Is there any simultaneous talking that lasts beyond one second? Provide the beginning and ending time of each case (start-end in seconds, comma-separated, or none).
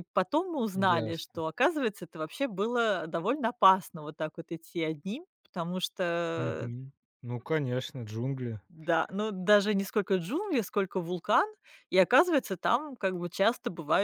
none